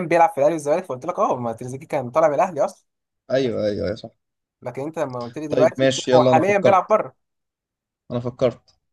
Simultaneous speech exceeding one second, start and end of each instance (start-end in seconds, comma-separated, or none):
5.5-7.0